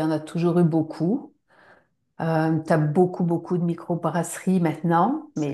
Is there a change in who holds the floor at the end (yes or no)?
no